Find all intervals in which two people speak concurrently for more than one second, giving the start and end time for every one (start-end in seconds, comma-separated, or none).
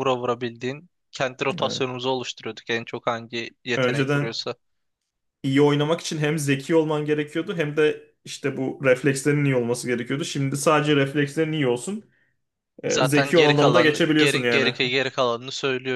12.9-14.7